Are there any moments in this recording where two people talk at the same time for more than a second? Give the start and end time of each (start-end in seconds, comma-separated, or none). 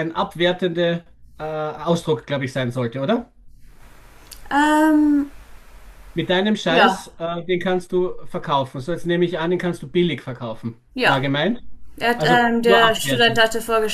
12.2-13.4